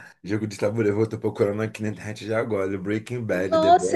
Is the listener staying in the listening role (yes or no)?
no